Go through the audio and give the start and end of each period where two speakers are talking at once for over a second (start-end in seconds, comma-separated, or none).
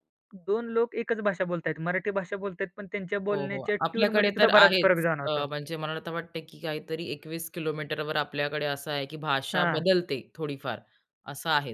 3.3-5.5